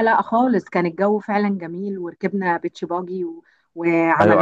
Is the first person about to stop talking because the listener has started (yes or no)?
yes